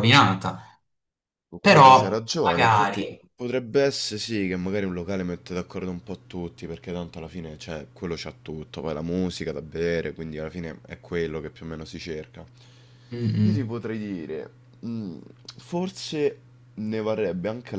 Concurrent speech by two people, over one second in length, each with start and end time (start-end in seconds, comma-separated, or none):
1.6-3.2